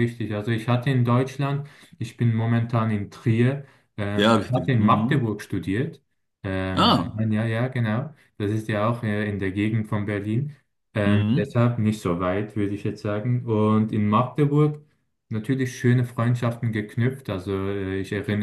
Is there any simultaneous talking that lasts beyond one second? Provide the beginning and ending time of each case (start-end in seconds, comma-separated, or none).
4.2-5.4